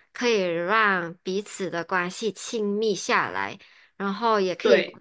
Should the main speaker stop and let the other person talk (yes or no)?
no